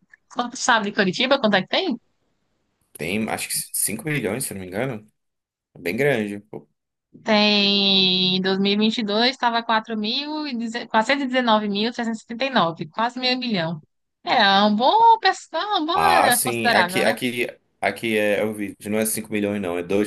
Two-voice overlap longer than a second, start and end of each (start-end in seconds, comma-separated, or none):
15.9-17.1